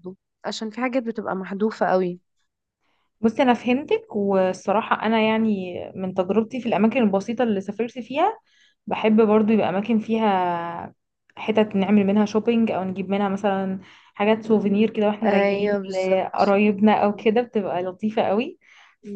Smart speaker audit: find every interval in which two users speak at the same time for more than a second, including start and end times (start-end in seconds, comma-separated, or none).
15.3-16.6